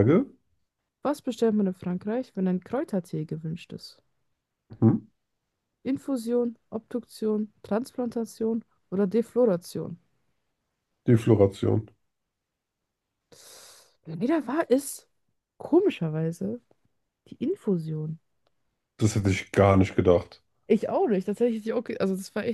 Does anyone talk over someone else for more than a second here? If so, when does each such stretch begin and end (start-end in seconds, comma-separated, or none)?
none